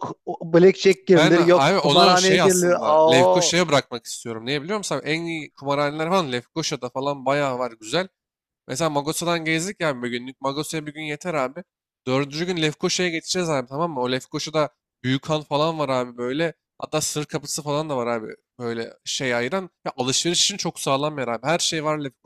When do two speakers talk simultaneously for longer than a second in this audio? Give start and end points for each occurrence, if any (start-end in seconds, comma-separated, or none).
1.1-3.5